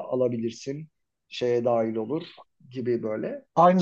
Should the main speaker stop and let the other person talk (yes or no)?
yes